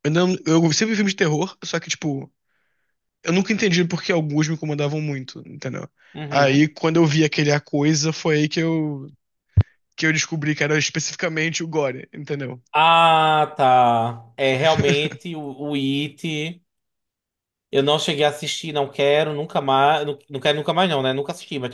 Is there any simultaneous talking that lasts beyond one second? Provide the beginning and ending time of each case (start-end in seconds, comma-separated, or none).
none